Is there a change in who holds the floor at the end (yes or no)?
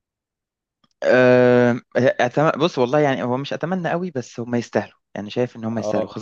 no